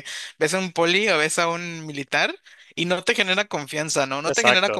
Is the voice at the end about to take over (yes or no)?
yes